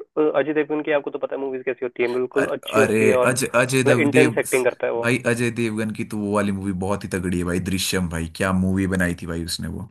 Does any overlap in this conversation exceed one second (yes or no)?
yes